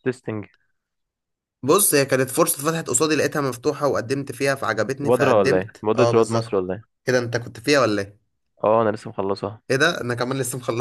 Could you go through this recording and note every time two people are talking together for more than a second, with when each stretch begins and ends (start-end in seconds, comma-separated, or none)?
5.0-6.6